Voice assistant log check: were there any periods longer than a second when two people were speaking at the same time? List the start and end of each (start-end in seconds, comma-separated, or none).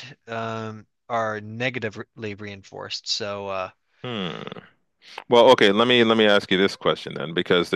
none